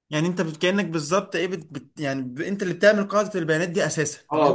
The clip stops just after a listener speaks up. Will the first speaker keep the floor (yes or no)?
no